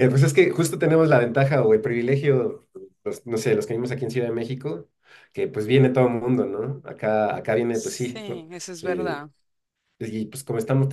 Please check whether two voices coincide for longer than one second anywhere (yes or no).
yes